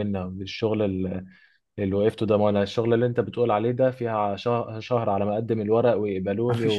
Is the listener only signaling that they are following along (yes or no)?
no